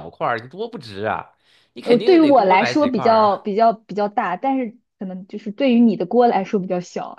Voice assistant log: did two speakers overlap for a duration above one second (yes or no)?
yes